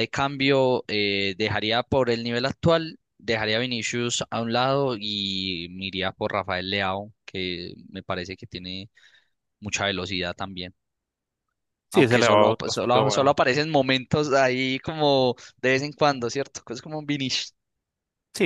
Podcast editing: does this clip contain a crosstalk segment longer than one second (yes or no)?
yes